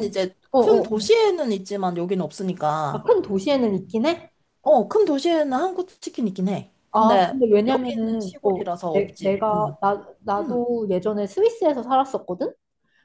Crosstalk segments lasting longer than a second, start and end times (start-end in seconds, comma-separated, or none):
6.9-9.8